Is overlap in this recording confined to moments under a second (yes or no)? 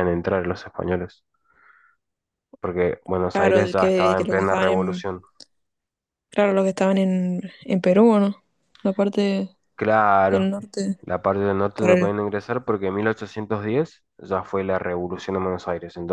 no